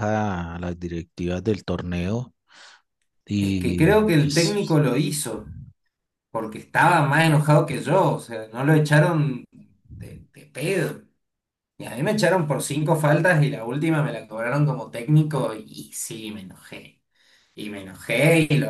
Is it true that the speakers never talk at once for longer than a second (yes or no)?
no